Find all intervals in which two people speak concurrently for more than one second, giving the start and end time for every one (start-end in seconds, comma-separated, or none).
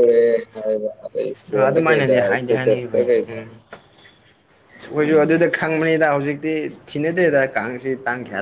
1.7-3.4